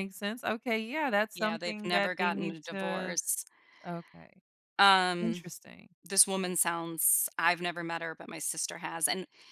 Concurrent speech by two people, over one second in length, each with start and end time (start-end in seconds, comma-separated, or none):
1.4-3.2